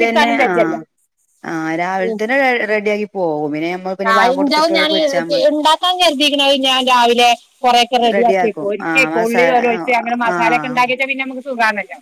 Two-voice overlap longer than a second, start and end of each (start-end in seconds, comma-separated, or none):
8.2-9.5